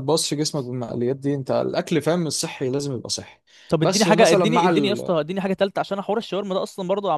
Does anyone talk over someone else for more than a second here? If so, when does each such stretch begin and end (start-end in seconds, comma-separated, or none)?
3.8-5.1